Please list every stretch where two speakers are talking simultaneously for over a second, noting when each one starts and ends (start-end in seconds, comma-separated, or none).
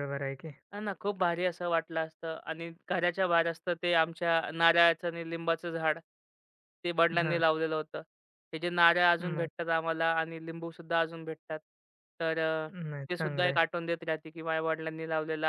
none